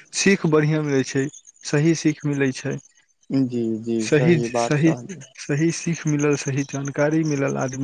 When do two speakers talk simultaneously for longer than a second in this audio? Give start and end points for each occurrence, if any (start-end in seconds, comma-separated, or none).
none